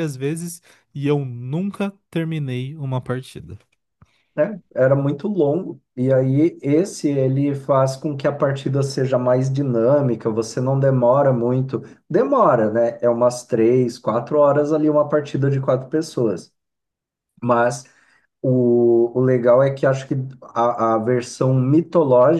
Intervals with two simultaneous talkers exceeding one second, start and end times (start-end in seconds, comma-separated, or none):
none